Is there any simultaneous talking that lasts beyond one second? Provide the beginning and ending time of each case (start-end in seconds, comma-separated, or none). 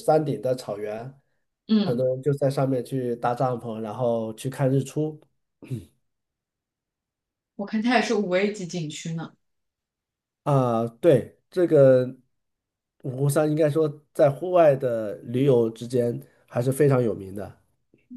none